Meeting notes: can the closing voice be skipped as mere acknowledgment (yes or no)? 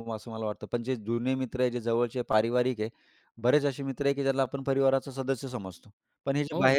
yes